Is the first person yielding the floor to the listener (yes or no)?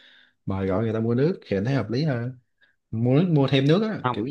no